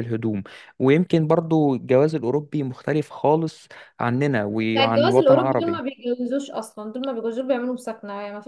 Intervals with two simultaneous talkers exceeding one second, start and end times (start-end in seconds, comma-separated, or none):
4.6-5.8